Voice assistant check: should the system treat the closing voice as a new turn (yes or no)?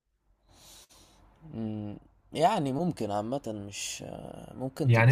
yes